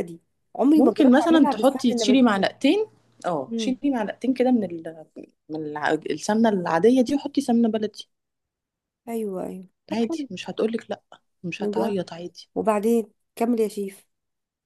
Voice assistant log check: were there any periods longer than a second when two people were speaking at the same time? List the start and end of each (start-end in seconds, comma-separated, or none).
0.8-2.3